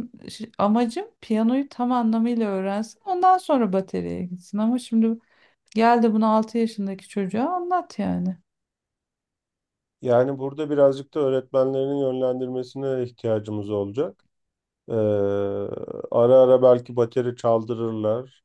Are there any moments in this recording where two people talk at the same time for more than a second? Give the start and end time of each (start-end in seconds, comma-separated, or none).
none